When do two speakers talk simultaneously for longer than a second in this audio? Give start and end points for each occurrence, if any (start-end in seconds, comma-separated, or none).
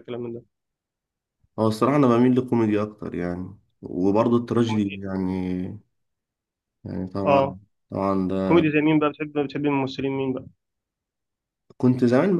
none